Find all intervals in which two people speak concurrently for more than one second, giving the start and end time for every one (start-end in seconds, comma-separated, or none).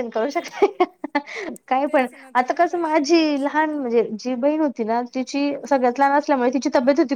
1.9-3.8